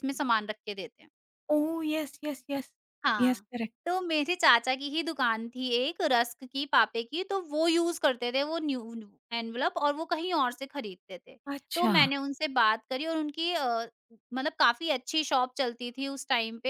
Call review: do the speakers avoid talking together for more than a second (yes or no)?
yes